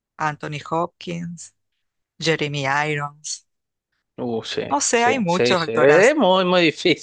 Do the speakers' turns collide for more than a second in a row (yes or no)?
yes